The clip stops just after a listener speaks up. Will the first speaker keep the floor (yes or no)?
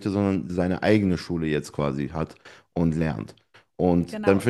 yes